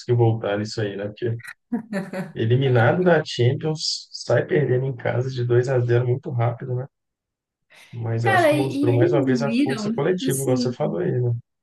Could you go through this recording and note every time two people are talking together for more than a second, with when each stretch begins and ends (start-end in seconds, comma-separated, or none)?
8.2-10.8